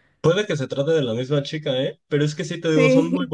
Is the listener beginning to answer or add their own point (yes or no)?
no